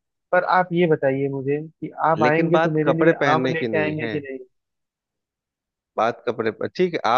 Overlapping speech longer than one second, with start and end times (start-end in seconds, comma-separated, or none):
2.2-4.2